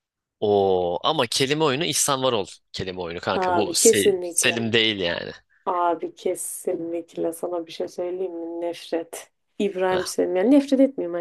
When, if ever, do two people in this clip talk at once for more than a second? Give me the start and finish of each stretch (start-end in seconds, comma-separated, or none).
3.3-4.7